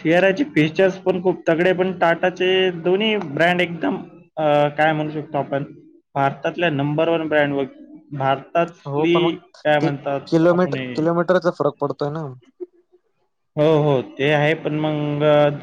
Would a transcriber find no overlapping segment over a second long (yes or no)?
yes